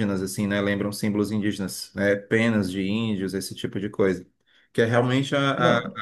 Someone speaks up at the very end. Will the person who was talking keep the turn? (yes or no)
yes